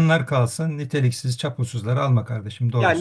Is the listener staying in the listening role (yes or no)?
no